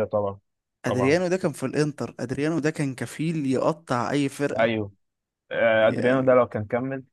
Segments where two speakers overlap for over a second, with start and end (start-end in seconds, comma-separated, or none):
none